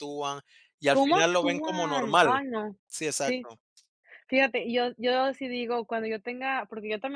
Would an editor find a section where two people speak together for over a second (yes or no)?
yes